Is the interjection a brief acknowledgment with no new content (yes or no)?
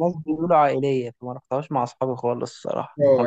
no